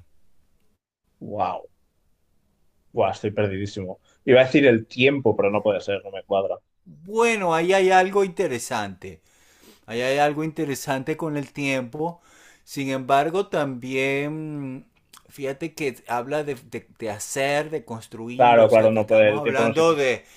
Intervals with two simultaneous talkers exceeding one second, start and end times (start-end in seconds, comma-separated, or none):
18.4-19.8